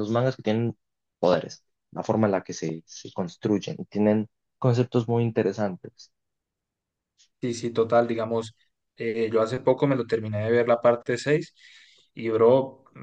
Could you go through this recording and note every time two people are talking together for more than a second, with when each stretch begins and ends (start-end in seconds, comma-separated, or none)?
none